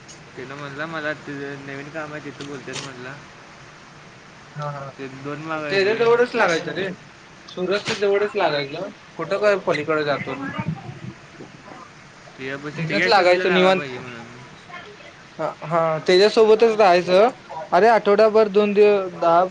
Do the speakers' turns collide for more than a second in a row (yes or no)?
yes